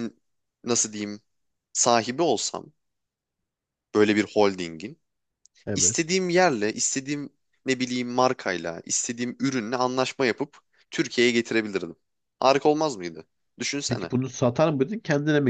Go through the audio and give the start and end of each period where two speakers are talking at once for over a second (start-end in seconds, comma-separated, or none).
none